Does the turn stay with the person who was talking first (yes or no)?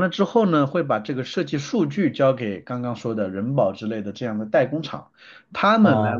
yes